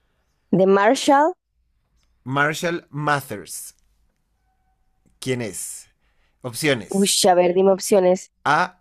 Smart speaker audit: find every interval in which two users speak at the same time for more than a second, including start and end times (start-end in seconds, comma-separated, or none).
none